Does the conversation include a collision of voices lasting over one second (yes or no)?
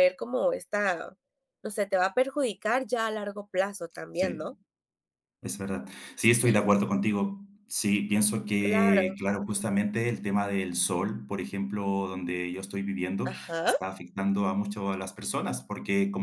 no